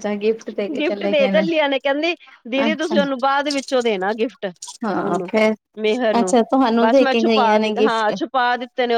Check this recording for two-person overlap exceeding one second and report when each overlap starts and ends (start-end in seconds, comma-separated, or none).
none